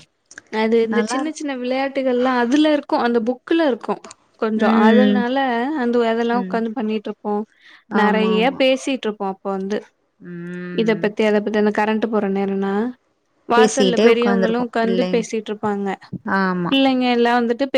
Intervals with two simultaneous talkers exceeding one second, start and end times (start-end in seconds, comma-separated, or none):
13.6-15.2